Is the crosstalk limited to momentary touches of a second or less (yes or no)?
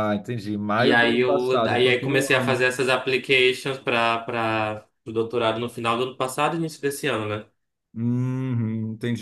no